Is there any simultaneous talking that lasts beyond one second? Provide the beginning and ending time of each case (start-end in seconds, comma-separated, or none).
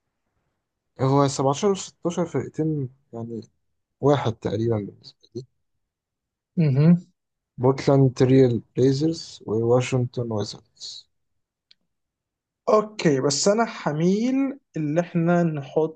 none